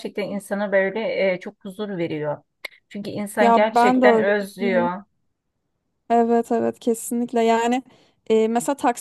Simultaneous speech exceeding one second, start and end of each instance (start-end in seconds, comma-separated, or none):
3.4-4.9